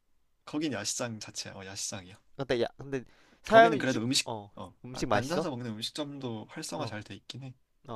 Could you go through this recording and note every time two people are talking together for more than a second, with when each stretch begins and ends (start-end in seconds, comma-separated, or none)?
3.5-5.5